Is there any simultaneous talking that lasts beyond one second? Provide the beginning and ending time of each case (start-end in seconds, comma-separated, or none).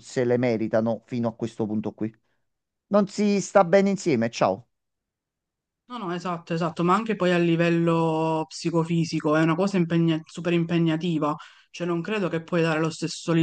none